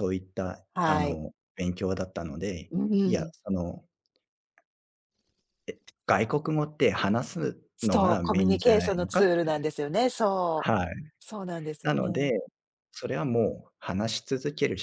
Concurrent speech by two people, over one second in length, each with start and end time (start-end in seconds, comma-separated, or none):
7.8-9.7